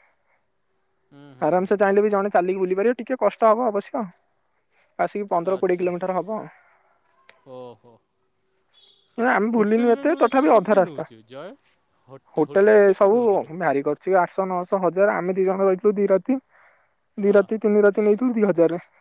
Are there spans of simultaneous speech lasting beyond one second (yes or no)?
yes